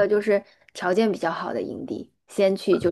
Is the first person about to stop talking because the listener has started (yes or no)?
no